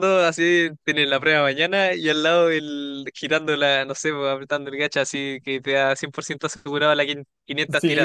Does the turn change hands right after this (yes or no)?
yes